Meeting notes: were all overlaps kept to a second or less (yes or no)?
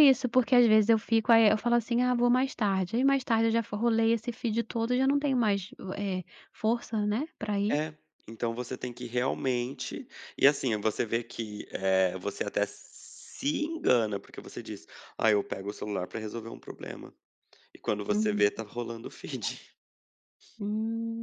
yes